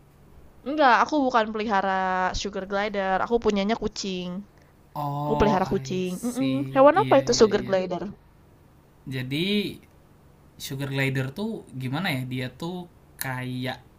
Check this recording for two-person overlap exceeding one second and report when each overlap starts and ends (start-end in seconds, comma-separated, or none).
5.2-7.8